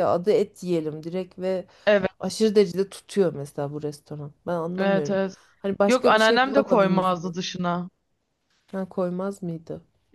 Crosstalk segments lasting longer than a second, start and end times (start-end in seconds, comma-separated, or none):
5.9-7.4